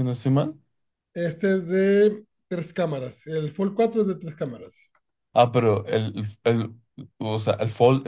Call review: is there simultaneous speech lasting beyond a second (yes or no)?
no